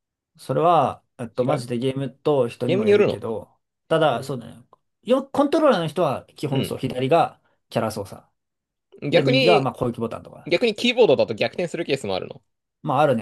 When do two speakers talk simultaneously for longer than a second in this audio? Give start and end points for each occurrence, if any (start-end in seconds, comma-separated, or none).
none